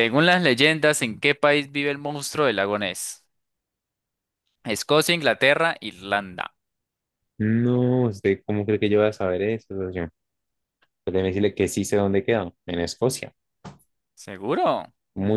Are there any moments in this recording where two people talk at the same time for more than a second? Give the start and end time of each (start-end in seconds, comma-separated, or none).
none